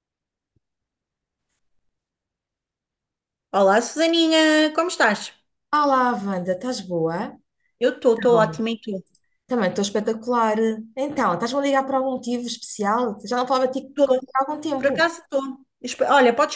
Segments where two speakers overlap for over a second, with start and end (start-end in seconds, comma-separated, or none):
none